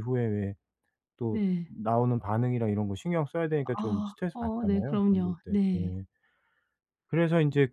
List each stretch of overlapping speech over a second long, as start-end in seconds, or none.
3.8-5.9